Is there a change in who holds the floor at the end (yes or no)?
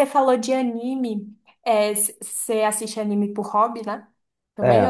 yes